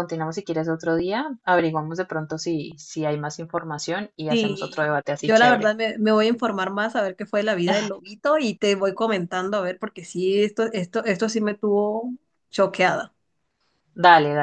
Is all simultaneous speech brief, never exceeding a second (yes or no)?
no